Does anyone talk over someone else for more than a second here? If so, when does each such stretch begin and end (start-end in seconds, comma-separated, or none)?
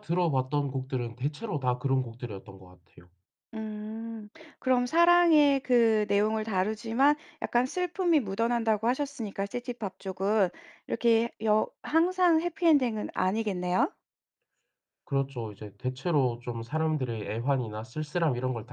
none